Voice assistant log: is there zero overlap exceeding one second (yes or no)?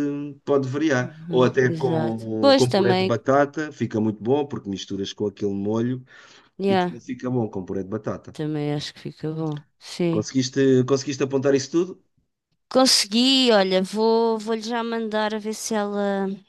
no